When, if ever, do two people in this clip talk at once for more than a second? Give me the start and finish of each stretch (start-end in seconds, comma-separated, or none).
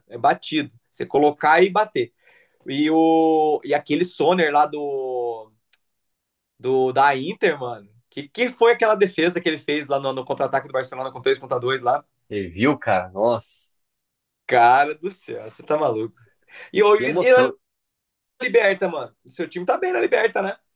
none